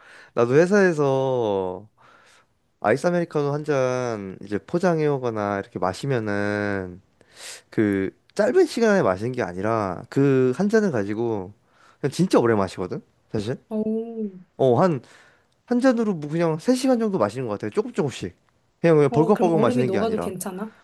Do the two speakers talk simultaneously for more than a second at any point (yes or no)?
yes